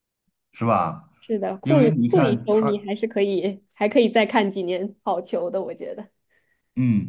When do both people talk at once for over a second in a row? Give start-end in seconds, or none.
1.6-2.9